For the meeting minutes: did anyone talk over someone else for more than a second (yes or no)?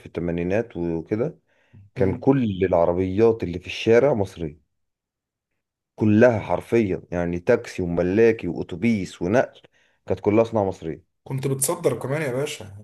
no